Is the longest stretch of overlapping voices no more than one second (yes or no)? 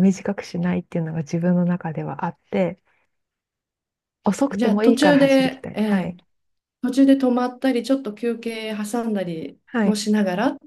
no